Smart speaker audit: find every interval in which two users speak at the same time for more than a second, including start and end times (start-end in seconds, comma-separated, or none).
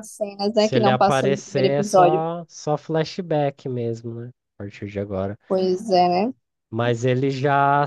0.5-2.3